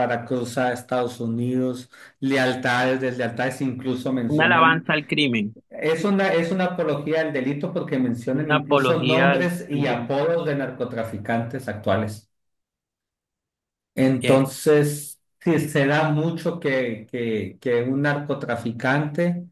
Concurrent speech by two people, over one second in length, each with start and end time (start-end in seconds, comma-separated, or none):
8.3-10.1